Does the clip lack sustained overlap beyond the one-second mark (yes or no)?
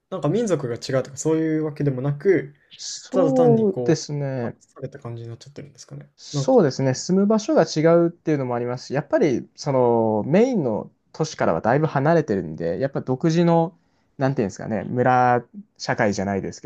no